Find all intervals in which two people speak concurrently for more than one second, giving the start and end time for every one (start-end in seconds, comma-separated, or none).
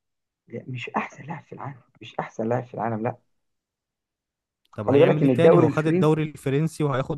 4.7-6.3